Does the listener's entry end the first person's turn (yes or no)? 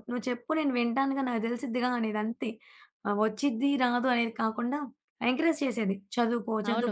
yes